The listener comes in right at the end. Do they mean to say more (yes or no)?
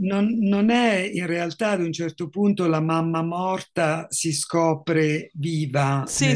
no